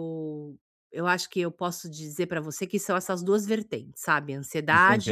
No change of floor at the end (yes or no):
no